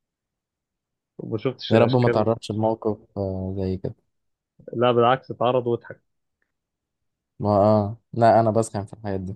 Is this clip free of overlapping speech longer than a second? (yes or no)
yes